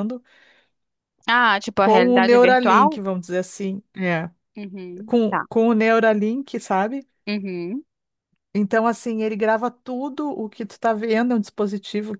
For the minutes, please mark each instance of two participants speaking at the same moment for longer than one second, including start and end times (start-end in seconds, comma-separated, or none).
1.8-3.0